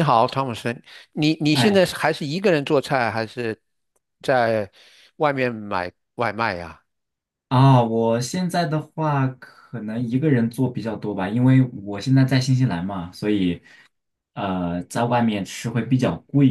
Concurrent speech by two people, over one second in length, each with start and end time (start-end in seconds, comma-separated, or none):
none